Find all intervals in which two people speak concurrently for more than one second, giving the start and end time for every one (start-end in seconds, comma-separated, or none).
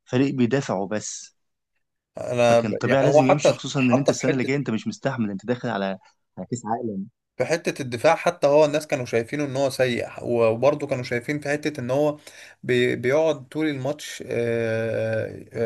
2.5-4.5